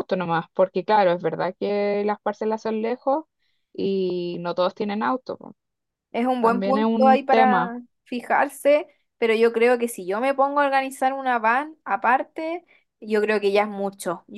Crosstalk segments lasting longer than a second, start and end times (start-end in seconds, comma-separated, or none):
6.4-7.7